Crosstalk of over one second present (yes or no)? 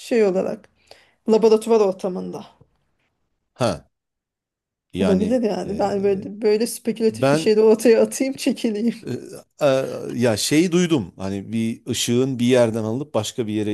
yes